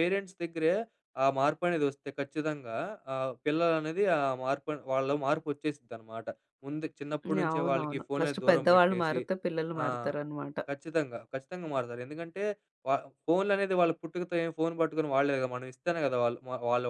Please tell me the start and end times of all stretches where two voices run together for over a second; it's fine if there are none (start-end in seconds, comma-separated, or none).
7.5-9.2